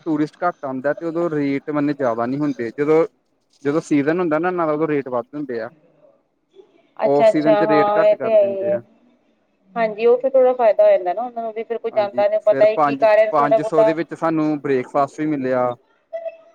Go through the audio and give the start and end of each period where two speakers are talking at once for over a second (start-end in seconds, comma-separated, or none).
7.2-8.8, 11.9-13.9